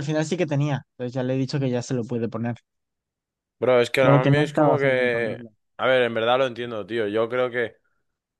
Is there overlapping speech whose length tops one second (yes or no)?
yes